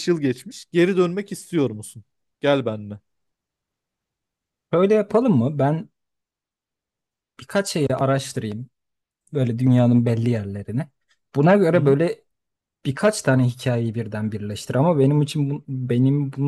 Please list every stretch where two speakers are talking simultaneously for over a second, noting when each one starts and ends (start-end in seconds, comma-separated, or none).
none